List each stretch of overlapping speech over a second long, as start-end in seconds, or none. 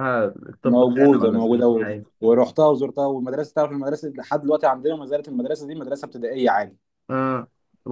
0.6-1.9